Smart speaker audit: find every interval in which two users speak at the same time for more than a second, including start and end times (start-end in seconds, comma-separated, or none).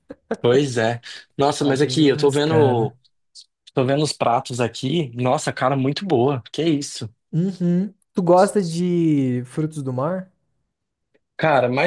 1.6-2.9